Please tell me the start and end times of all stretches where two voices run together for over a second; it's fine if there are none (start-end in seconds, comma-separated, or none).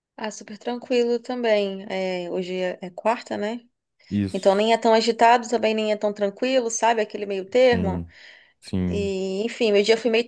none